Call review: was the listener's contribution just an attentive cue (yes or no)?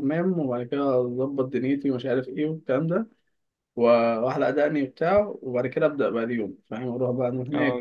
no